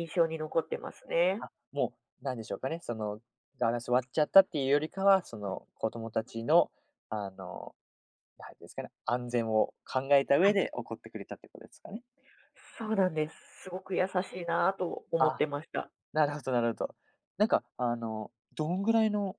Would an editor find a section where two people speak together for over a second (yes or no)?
no